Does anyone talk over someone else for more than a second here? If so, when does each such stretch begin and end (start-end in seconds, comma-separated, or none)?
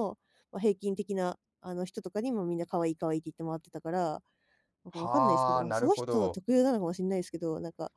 4.9-6.4